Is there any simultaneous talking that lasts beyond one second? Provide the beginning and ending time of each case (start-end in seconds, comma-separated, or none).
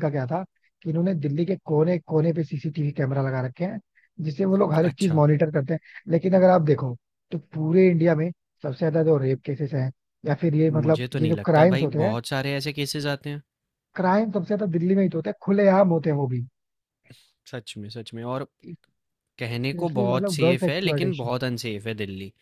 10.7-12.1, 19.6-21.3